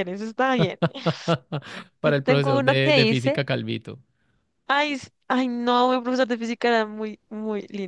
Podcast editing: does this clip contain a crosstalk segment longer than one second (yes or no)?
yes